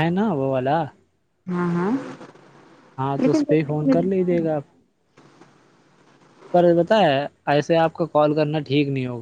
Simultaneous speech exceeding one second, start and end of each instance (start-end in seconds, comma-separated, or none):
3.2-4.7